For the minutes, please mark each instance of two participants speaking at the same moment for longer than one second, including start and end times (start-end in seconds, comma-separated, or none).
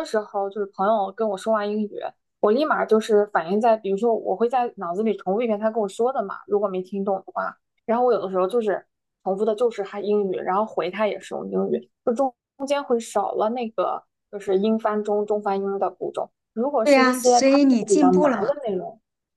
16.8-18.5